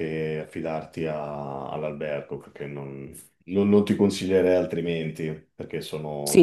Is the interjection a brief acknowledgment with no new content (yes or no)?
no